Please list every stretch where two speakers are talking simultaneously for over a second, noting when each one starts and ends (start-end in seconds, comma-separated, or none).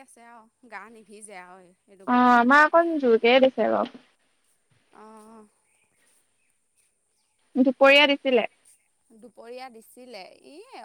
none